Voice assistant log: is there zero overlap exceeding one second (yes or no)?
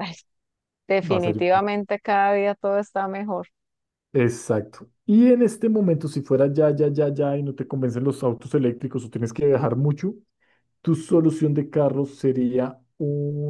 yes